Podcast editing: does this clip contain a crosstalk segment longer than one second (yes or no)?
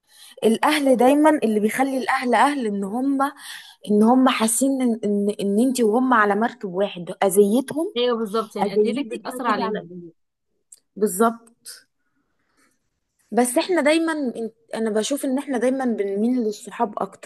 yes